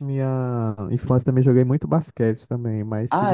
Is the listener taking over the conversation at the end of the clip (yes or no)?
no